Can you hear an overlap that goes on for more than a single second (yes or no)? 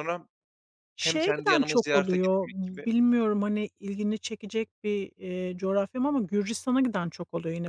yes